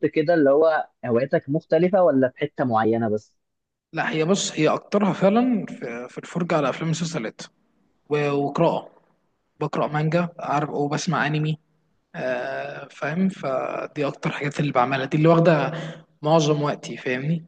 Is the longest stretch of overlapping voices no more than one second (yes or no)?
yes